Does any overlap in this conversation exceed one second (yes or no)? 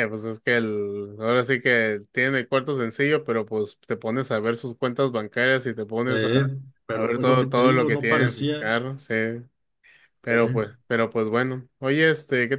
yes